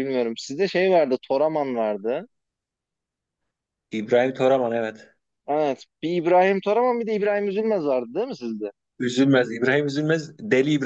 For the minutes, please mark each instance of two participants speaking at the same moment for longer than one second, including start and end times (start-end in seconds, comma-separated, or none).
none